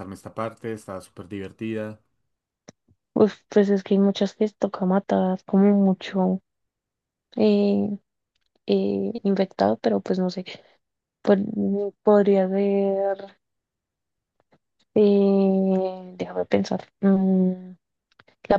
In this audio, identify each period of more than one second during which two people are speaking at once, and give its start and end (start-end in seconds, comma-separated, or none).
none